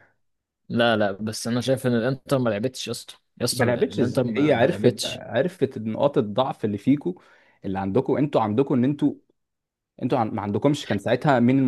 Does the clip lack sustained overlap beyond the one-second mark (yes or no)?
no